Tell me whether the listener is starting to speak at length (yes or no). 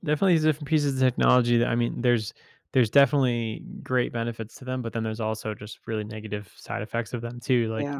no